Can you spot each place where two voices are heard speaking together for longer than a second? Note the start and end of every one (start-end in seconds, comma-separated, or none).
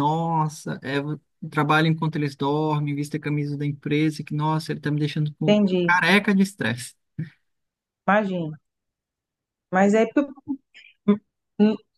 none